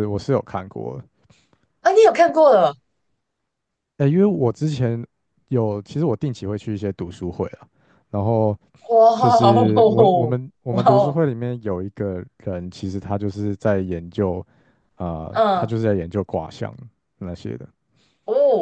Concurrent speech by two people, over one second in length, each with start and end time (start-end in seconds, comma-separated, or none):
9.7-11.2